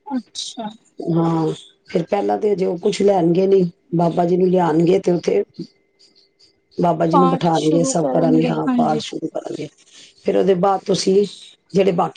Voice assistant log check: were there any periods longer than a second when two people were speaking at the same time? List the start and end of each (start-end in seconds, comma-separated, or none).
7.1-8.9